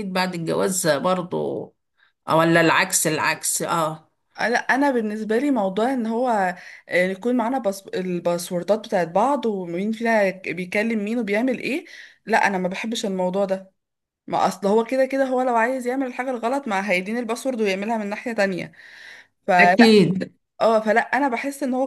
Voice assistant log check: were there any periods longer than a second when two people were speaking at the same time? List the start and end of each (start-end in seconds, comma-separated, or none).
none